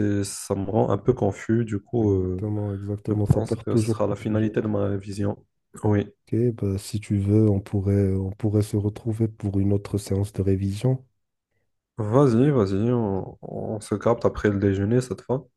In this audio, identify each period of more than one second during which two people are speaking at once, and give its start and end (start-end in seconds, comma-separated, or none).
3.1-4.5